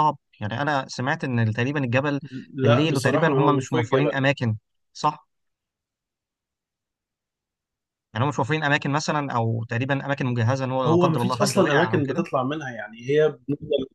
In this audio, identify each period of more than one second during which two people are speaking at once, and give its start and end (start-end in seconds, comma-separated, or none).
2.6-4.1, 10.9-12.2